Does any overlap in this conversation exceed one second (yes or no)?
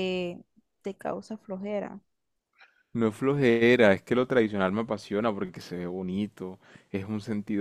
no